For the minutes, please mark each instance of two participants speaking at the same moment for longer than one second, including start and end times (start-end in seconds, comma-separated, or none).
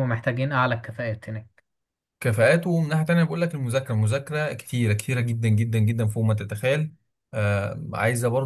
none